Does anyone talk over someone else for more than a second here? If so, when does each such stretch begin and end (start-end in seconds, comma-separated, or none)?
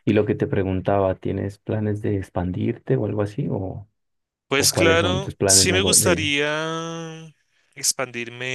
4.5-6.3